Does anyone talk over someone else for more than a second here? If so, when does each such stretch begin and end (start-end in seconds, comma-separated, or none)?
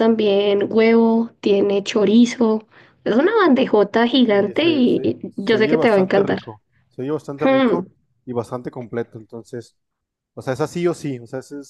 4.3-6.4